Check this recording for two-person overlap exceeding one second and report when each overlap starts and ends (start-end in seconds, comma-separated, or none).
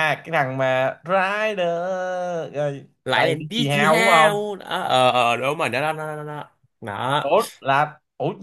3.0-4.5